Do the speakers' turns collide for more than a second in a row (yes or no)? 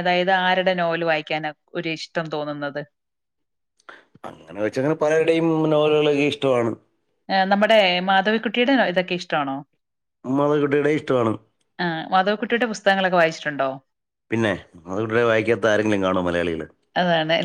no